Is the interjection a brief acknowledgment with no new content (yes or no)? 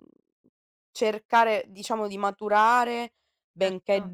yes